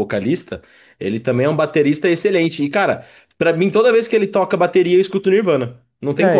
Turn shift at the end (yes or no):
yes